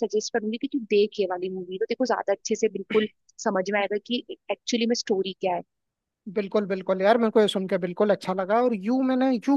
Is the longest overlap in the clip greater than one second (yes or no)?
no